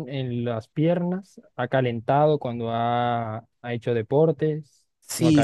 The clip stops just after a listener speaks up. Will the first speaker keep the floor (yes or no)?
no